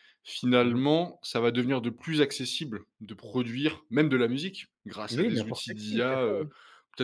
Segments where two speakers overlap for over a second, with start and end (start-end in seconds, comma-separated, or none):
5.1-6.5